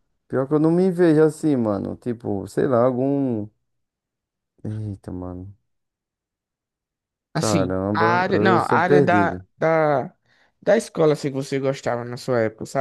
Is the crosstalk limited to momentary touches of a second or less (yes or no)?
no